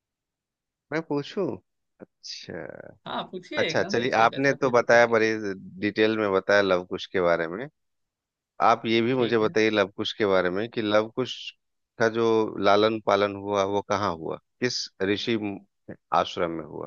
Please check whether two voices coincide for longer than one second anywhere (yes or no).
yes